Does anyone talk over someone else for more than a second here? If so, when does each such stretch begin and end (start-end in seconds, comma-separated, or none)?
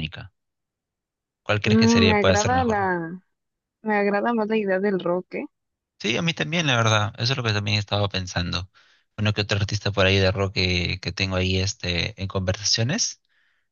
1.6-2.9